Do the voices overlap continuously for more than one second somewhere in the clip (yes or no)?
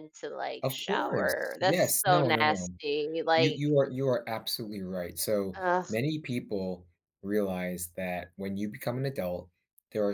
yes